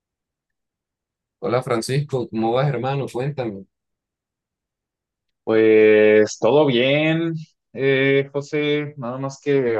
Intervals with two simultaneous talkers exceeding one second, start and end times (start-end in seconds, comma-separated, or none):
none